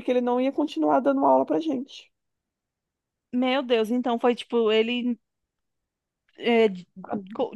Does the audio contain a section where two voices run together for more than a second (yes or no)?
no